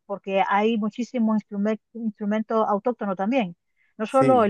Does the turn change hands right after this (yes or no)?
no